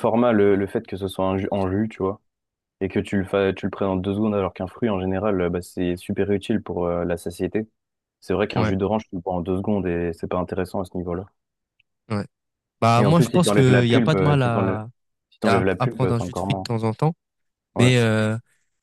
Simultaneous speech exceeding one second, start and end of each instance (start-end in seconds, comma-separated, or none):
13.0-14.8, 15.4-16.7